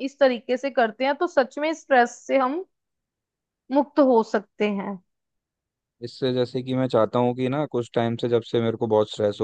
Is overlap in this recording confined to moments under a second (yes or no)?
yes